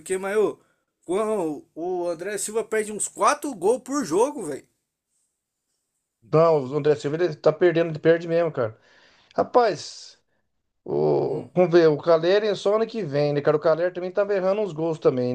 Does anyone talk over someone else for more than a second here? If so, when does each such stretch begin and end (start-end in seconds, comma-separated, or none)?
none